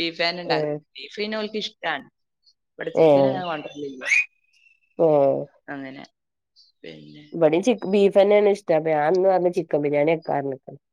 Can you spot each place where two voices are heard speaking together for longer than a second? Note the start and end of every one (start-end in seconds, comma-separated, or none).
none